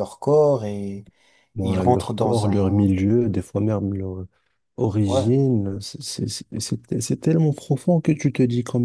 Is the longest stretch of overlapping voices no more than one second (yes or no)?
no